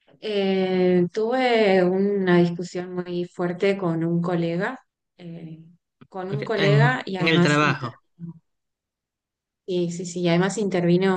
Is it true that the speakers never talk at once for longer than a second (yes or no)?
no